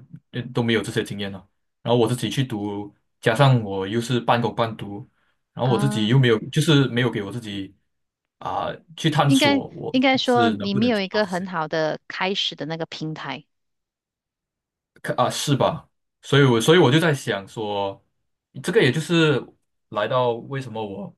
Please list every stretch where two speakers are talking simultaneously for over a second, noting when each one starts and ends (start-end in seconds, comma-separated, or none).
9.2-11.5